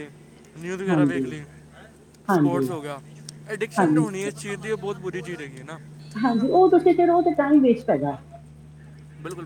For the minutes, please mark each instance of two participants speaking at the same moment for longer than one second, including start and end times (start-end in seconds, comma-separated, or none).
none